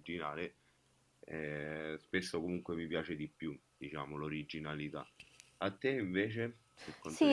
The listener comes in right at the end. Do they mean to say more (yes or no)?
yes